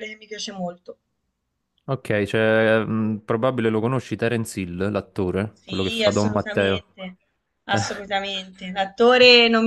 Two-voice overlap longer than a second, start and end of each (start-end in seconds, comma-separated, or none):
5.5-6.8